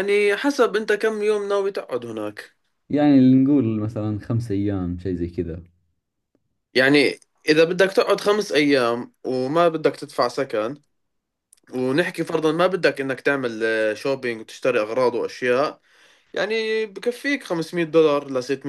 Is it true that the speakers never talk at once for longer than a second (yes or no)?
yes